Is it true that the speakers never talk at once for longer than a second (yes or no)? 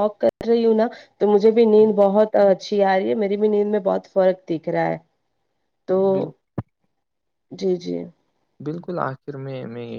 yes